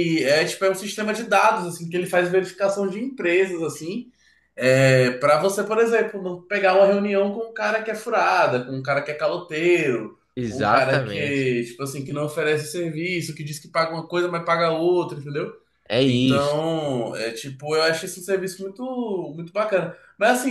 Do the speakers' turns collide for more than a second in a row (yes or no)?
yes